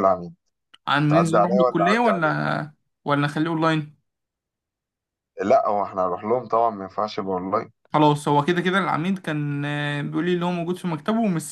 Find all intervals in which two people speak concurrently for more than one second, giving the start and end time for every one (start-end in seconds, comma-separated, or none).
1.1-2.4